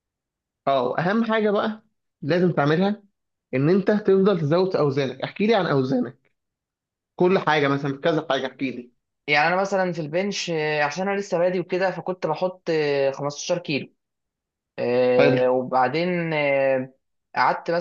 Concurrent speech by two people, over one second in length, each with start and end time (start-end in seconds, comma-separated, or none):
none